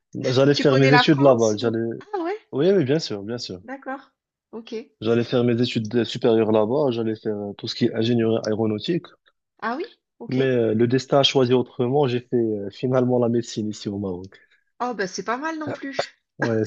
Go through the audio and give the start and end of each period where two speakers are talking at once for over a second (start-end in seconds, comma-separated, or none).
0.5-1.8